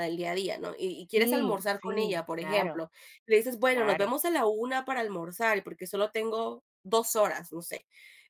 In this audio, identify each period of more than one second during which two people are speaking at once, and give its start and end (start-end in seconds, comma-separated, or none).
1.1-2.8